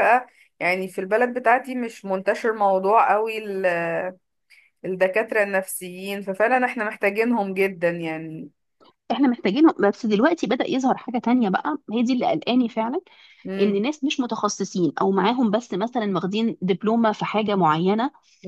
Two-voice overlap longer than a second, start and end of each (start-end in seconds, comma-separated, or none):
none